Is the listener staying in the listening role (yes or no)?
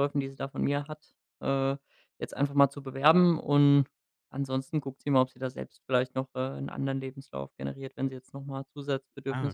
no